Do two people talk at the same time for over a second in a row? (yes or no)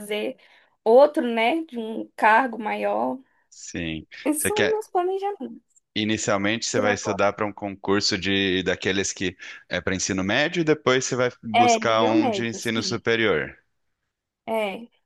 yes